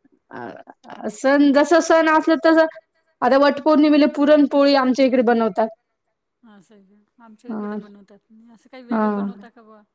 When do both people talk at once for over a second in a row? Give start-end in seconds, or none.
none